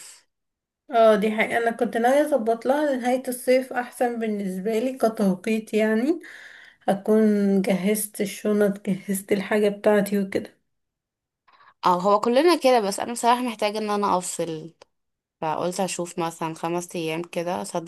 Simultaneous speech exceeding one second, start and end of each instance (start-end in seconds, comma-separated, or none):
none